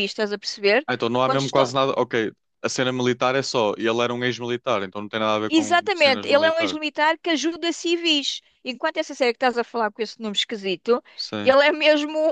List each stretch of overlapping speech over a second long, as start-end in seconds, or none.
5.5-6.8